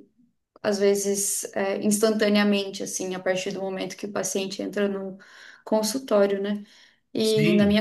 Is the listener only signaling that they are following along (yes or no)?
yes